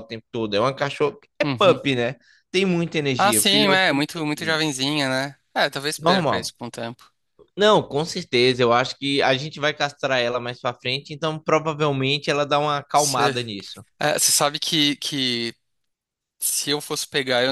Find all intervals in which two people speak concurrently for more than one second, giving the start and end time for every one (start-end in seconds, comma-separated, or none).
3.2-4.6